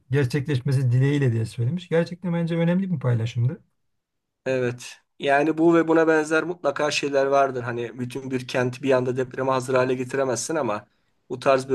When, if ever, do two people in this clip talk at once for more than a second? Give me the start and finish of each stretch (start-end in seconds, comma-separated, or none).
none